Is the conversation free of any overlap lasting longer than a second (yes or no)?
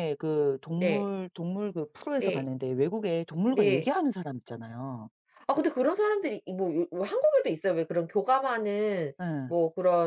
yes